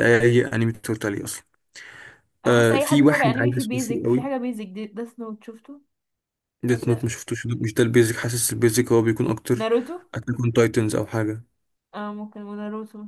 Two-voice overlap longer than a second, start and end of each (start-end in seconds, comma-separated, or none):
2.5-4.3